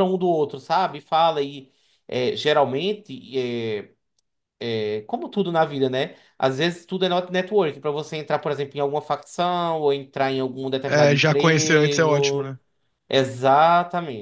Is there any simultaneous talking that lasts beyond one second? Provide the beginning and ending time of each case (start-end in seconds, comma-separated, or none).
10.9-12.5